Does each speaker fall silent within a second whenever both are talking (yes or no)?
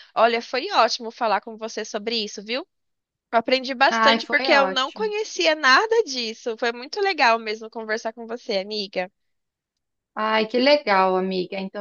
no